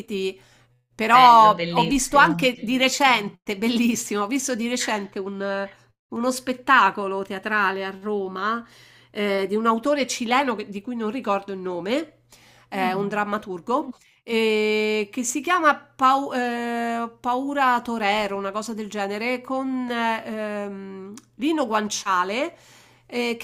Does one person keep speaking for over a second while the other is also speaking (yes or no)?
yes